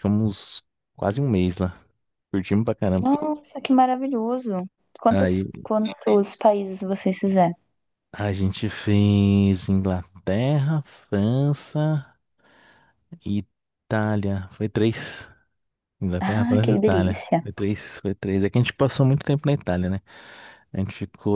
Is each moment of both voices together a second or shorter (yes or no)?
no